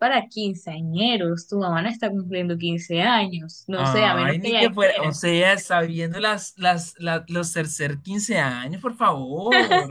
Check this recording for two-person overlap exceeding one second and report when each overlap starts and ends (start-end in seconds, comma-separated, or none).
3.8-5.2